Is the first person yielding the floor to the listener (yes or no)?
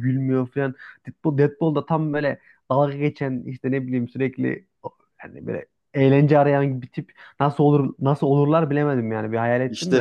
yes